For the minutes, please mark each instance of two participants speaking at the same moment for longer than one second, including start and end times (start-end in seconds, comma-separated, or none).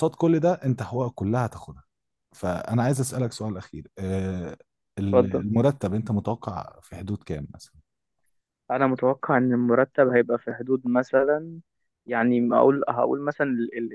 none